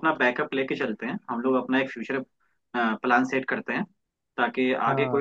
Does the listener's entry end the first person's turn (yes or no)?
no